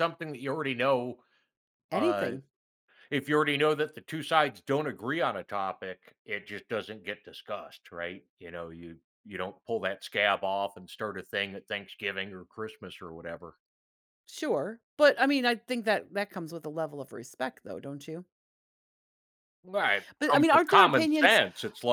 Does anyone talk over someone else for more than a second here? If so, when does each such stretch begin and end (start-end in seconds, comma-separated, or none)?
20.2-21.4